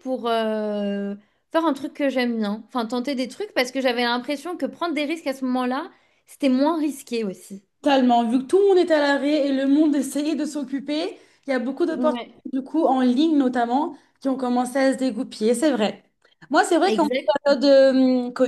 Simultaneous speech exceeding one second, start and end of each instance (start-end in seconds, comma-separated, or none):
none